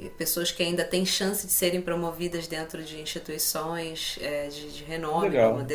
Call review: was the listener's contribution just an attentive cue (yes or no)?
yes